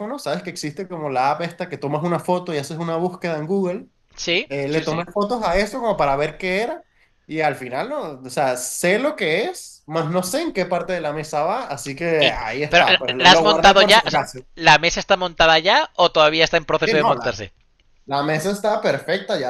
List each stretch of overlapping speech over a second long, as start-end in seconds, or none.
12.2-14.4